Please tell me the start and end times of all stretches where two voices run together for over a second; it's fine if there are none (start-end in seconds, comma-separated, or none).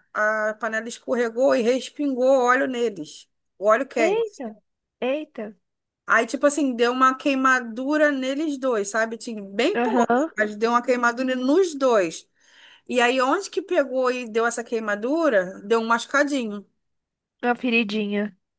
none